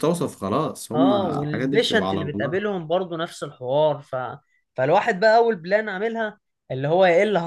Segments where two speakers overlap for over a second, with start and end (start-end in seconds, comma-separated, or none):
0.9-2.6